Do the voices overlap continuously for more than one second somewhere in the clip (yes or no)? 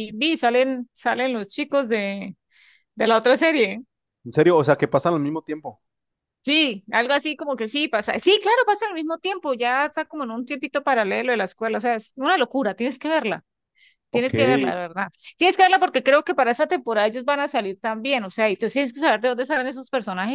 no